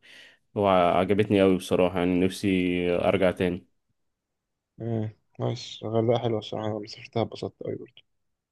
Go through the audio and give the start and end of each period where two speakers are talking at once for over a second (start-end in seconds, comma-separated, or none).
none